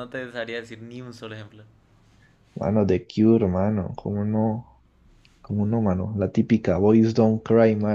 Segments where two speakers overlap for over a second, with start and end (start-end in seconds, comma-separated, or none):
none